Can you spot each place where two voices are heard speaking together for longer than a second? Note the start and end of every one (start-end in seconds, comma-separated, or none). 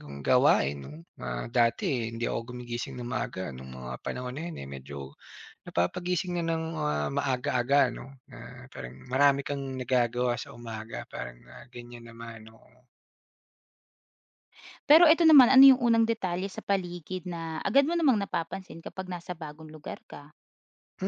none